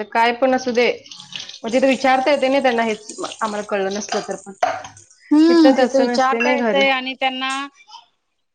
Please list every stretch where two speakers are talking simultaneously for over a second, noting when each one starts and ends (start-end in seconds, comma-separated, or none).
5.3-6.8